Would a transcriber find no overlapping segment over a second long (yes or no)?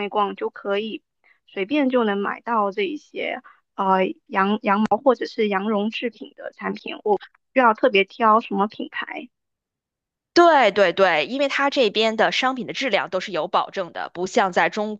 yes